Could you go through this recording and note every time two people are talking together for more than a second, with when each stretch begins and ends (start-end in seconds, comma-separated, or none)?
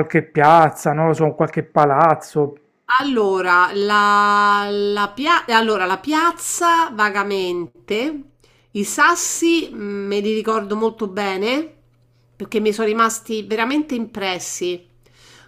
none